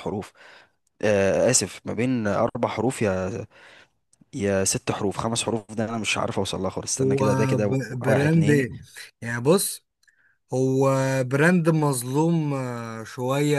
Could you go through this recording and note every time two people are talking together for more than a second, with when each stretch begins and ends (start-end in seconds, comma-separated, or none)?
7.0-8.7